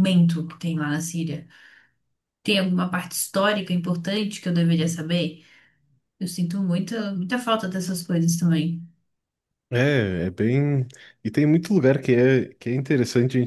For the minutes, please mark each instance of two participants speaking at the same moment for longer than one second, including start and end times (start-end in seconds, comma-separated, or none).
none